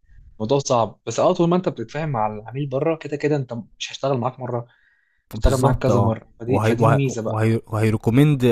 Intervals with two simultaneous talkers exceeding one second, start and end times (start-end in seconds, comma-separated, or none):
5.3-7.5